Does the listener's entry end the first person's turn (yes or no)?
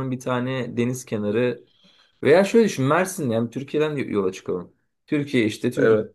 no